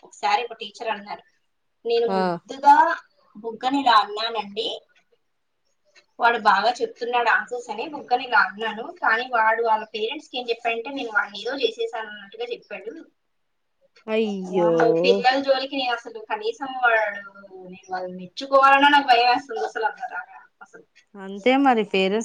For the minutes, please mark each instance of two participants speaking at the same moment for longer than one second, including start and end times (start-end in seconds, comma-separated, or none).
none